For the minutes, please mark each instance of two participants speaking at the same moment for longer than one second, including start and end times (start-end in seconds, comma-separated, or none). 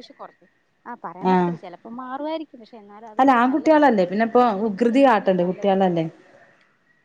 3.2-5.7